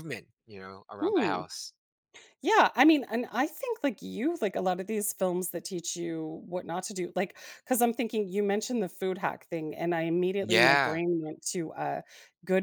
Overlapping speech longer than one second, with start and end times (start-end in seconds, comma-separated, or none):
none